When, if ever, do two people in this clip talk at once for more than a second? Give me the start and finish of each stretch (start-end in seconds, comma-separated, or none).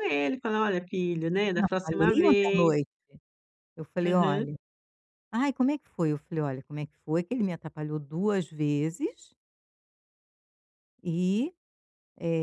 1.5-2.7